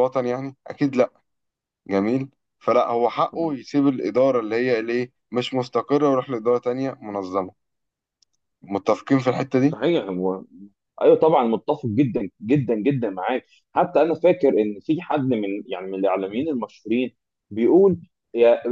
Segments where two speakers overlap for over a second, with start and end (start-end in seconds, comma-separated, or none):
none